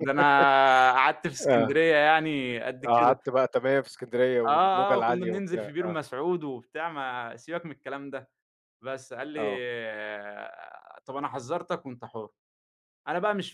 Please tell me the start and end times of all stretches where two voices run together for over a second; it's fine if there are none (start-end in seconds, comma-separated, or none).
4.5-6.0